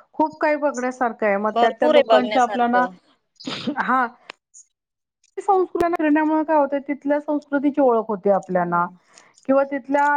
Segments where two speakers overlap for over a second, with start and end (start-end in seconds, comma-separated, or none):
1.5-2.9